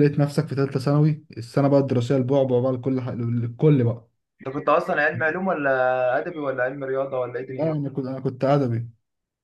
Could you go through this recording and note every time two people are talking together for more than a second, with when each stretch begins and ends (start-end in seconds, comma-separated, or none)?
none